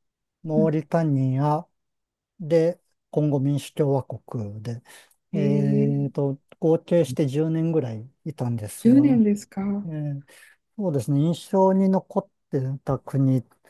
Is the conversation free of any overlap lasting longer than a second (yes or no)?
yes